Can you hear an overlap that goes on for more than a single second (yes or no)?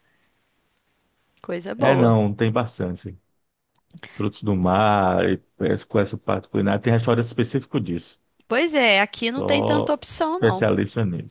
yes